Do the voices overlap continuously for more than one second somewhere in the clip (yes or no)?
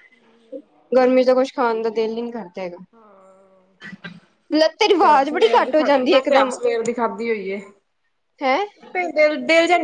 yes